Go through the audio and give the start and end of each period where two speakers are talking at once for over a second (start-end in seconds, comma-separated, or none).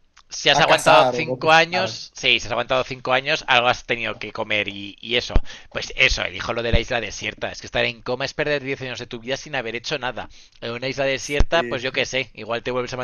0.5-2.0